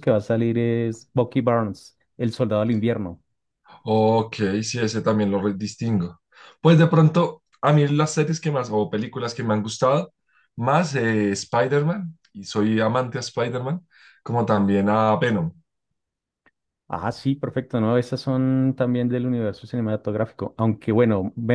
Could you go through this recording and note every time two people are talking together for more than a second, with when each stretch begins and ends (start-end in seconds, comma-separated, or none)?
none